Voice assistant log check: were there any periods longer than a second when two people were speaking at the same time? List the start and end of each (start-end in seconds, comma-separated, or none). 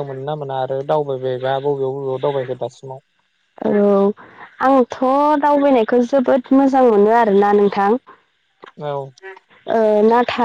none